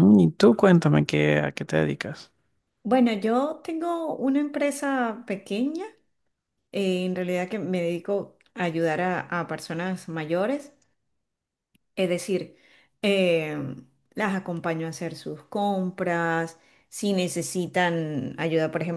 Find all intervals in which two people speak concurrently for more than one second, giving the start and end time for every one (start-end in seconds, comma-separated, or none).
none